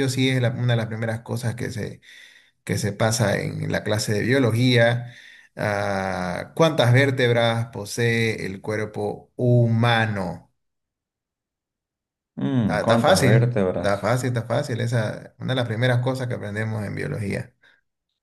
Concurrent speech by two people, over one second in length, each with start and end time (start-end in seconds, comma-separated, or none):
12.7-14.1